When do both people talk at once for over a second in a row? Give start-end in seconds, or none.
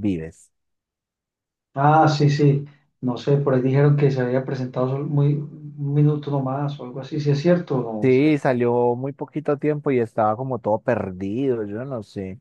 none